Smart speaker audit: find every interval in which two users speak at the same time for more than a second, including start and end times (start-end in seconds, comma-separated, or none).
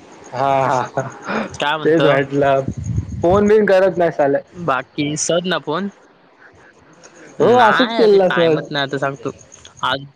7.4-8.9